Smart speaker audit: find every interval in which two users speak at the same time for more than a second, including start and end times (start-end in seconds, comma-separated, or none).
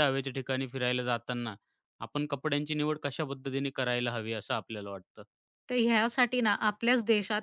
none